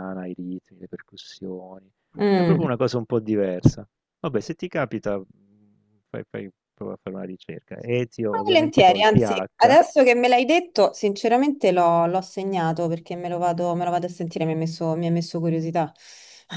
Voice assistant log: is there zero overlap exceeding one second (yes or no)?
no